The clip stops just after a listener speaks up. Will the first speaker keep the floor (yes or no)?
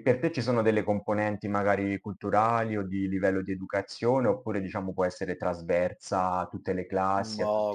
no